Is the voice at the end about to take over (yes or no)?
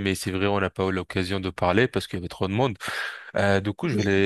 no